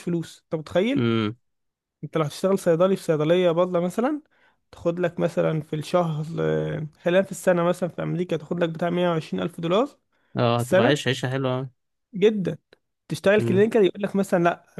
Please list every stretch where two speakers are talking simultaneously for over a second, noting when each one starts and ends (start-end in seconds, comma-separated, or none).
none